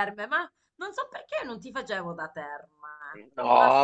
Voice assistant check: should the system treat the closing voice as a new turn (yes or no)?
yes